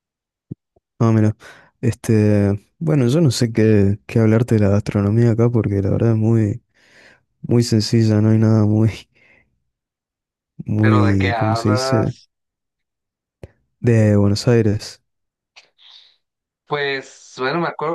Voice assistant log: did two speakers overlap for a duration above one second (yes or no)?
yes